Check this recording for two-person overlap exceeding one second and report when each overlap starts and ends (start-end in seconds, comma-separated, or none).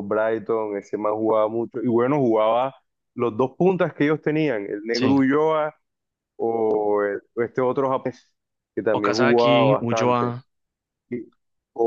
9.0-10.3